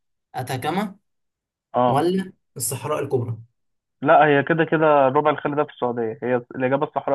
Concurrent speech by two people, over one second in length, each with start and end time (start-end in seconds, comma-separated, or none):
none